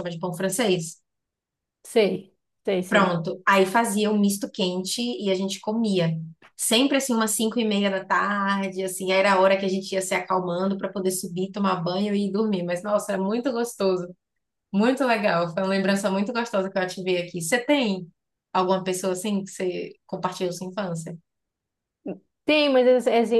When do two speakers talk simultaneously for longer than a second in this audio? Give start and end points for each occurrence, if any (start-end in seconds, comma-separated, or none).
none